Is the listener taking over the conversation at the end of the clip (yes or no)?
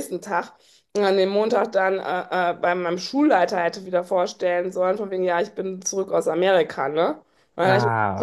no